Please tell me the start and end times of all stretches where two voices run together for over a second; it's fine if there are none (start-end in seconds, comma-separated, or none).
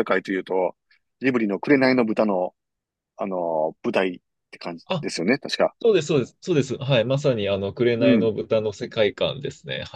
none